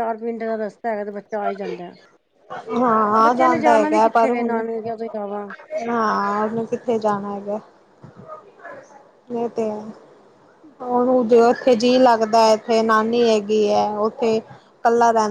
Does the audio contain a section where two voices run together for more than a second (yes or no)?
no